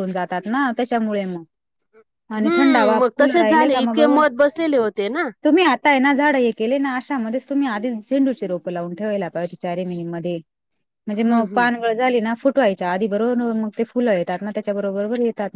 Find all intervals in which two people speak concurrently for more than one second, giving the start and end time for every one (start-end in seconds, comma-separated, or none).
2.4-4.2